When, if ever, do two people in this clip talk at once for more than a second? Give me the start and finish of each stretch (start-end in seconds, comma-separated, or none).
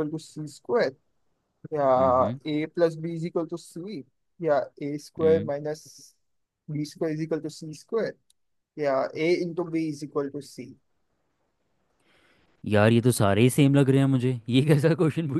none